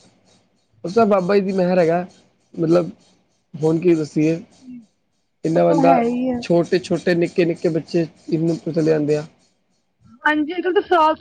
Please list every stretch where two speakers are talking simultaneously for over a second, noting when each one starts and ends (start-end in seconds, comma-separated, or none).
none